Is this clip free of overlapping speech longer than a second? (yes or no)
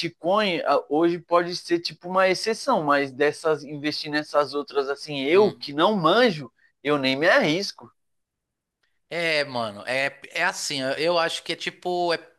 yes